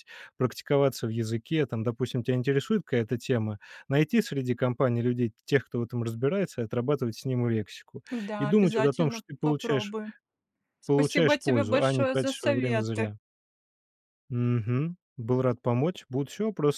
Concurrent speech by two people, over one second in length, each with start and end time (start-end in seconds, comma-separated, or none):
8.1-9.9, 10.9-13.1